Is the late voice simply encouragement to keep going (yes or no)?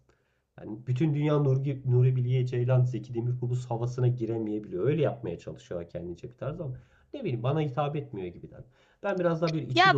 no